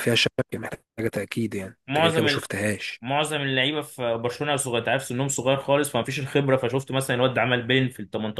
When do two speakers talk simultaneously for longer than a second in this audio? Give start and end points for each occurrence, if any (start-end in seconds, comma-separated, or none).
none